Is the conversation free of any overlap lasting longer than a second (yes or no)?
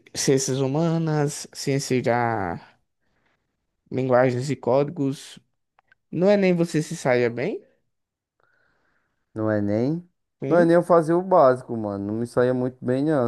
yes